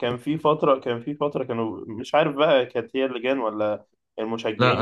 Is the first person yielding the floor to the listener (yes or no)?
yes